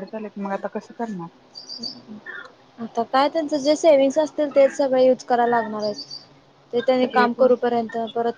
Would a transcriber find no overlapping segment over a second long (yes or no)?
yes